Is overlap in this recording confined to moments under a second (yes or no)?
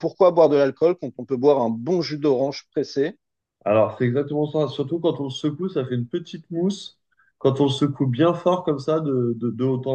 yes